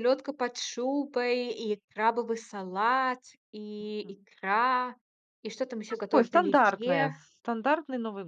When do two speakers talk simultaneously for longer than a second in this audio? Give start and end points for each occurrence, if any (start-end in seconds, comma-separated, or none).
5.9-7.1